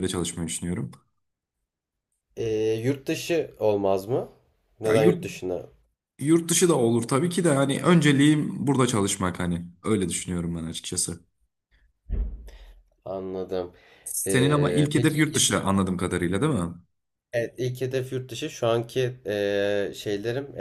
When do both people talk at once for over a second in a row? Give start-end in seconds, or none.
14.3-15.5